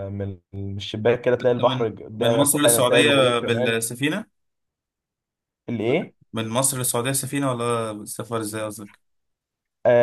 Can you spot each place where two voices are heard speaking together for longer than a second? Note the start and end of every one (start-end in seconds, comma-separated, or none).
1.4-3.8